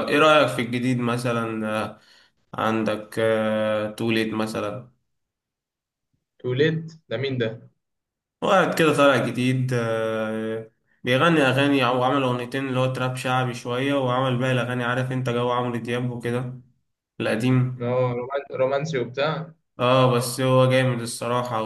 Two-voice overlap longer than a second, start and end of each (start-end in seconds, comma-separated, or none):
none